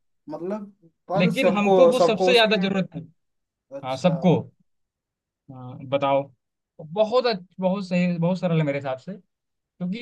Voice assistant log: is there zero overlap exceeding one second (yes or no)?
no